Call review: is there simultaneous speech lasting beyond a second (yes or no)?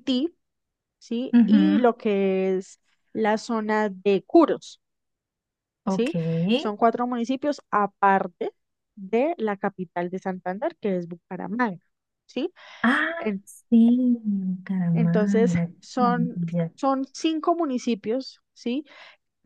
yes